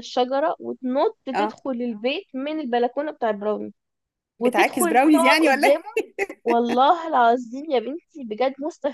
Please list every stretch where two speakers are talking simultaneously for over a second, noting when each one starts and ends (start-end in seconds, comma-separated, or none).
4.4-5.8